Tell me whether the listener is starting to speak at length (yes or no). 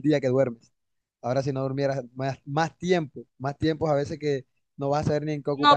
yes